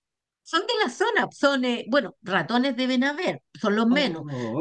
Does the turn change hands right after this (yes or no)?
no